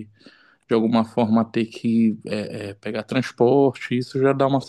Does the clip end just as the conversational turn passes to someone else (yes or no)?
no